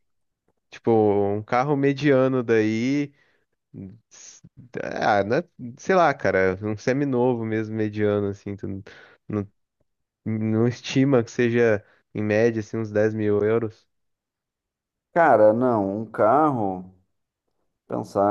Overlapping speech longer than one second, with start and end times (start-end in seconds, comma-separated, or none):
none